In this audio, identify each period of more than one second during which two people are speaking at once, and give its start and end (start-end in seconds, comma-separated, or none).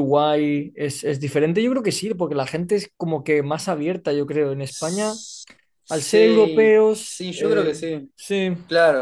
5.9-8.1